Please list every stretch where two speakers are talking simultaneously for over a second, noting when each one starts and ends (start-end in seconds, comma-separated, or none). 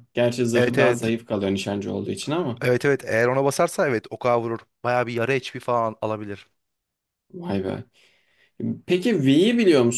none